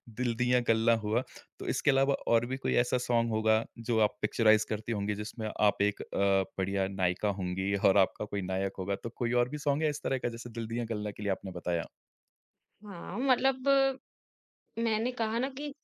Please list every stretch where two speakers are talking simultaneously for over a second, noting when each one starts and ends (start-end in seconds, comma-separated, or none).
none